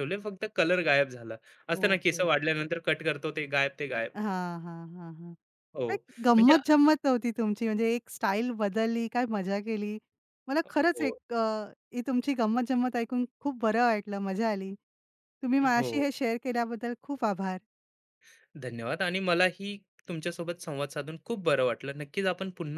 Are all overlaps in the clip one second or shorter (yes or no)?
yes